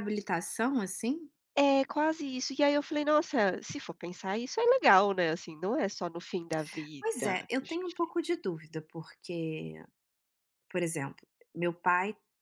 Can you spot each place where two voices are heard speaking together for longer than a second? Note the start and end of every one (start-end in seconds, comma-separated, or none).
none